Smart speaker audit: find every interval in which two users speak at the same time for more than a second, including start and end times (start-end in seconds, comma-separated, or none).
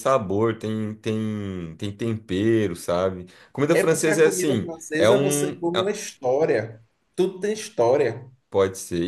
3.7-6.0